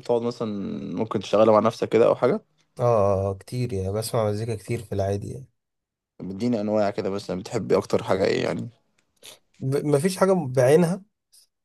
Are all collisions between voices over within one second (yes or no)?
yes